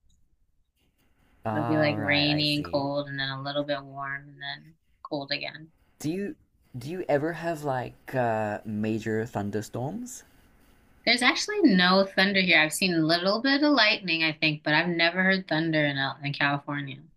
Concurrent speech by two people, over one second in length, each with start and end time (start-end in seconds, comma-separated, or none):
1.5-2.9